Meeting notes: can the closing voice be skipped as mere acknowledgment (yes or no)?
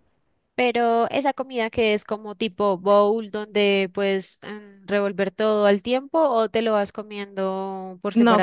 no